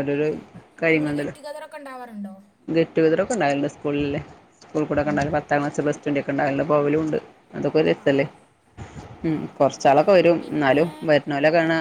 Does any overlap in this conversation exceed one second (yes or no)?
no